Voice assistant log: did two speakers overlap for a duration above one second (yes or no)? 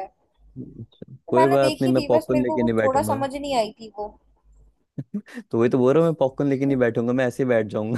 yes